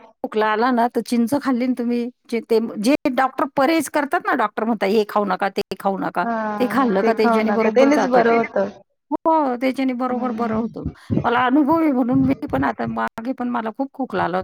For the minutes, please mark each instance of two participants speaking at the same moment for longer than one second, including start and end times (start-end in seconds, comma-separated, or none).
6.2-8.3